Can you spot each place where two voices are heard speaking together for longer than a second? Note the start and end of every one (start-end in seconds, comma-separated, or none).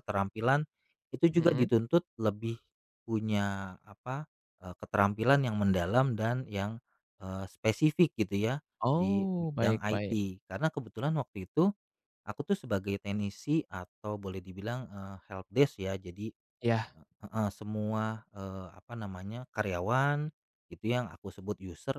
8.9-10.2